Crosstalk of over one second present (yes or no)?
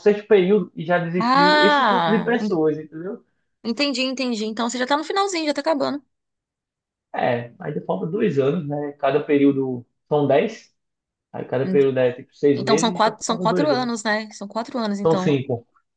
yes